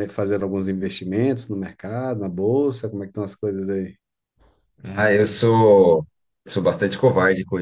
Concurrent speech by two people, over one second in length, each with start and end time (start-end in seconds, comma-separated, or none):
none